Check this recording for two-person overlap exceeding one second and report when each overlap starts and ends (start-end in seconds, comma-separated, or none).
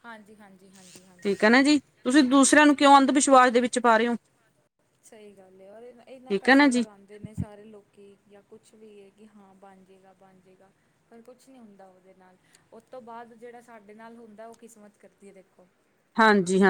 none